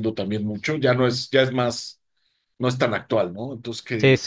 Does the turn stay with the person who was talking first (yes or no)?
no